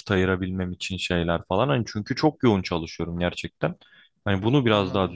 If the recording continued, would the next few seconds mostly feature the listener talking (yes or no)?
no